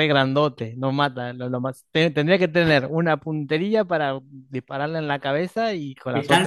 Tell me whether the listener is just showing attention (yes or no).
no